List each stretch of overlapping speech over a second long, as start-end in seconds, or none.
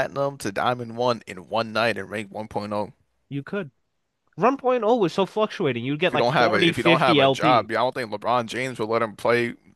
6.1-7.7